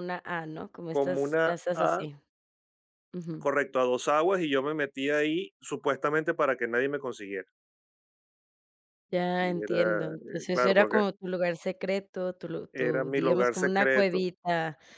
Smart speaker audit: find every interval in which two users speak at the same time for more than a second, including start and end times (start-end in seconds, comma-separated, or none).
0.9-2.1, 9.4-11.0, 12.7-14.3